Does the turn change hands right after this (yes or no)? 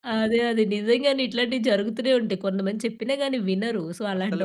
no